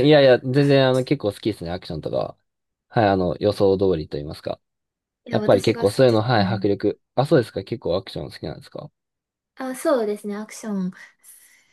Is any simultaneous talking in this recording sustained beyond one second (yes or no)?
yes